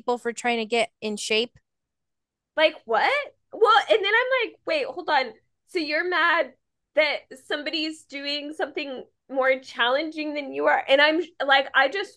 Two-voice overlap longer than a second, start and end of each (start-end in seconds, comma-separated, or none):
none